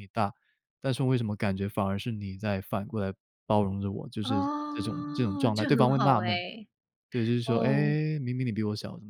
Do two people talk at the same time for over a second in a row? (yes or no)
yes